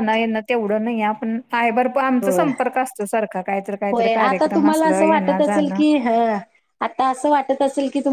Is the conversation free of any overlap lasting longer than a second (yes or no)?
no